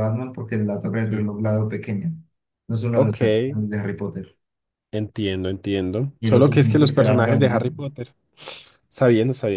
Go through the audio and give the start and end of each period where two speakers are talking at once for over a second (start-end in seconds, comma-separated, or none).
6.2-7.7